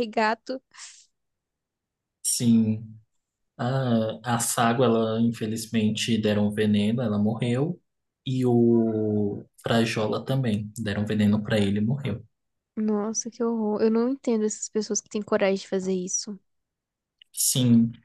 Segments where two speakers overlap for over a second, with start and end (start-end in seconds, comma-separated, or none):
none